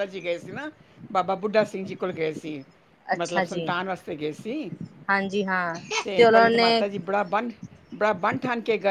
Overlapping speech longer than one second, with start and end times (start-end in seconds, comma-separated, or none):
none